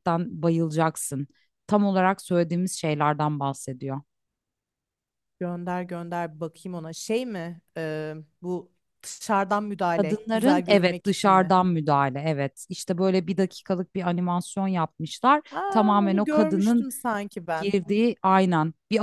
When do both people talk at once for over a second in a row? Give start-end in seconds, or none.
10.0-11.5, 15.5-16.9